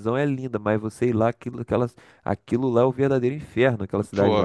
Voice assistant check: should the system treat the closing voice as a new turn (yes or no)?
yes